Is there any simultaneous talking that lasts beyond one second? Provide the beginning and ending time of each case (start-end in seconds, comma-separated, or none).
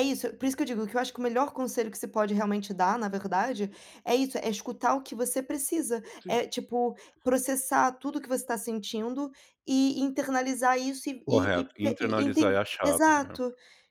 11.2-13.4